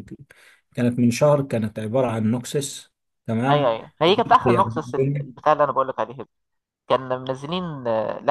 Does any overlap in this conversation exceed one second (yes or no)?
yes